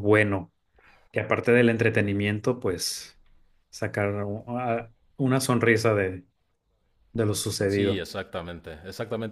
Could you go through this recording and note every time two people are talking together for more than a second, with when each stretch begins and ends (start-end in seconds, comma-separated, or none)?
none